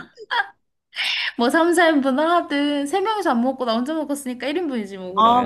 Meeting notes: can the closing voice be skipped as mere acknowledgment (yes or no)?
no